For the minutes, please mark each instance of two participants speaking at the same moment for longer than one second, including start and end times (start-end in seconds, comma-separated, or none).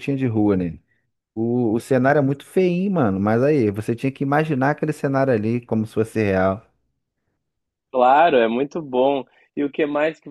none